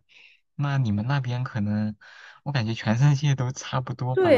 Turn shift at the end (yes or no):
yes